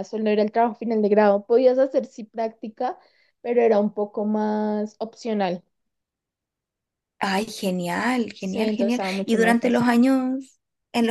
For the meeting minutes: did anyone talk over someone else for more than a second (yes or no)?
yes